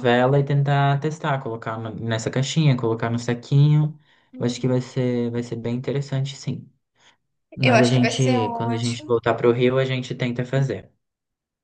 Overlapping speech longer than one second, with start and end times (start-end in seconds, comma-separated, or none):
7.6-9.1